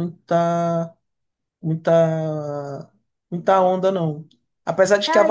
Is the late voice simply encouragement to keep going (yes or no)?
yes